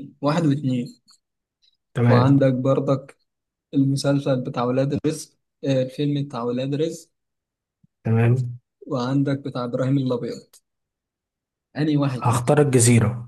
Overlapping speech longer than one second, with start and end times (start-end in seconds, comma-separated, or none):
none